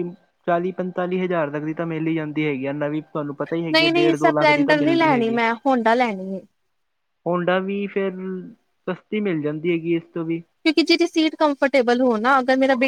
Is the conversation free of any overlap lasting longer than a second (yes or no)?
no